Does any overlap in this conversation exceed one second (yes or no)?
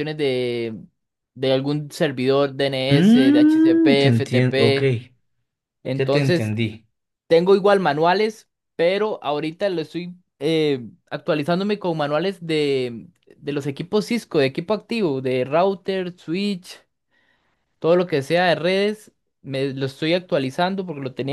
yes